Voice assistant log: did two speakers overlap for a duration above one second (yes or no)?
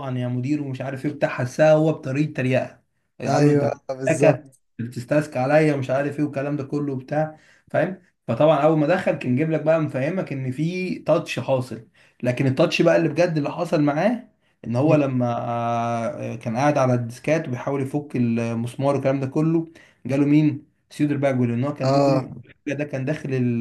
yes